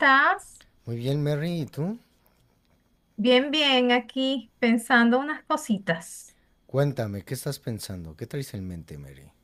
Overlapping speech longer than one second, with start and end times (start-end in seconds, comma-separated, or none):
none